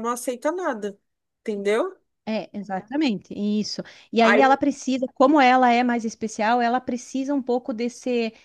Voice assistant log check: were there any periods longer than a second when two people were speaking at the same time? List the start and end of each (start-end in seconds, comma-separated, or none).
none